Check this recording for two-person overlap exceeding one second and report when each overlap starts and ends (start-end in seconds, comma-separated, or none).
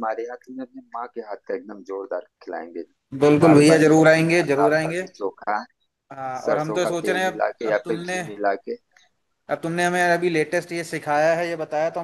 3.4-5.0, 6.5-8.2